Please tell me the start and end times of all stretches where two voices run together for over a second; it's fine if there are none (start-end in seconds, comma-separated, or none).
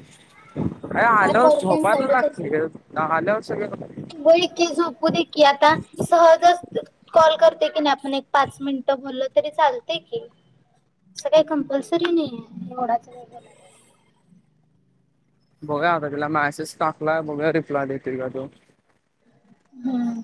1.3-2.6